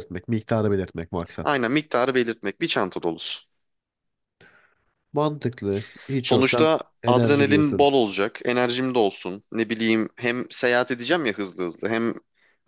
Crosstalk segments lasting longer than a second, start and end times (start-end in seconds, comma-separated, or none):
6.2-7.9